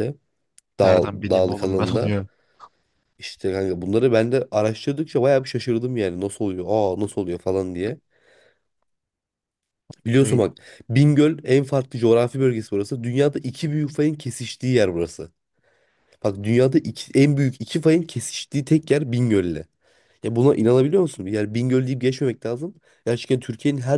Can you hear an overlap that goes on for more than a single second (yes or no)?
yes